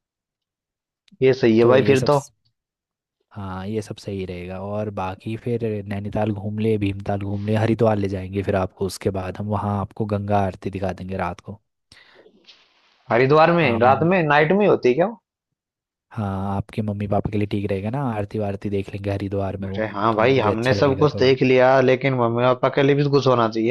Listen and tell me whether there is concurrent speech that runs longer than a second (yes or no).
yes